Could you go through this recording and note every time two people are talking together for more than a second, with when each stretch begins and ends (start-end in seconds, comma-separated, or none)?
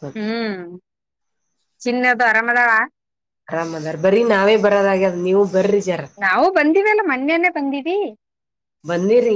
none